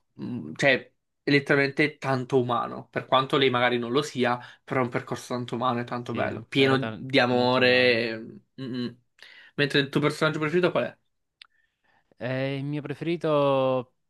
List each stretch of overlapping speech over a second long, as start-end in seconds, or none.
6.0-8.0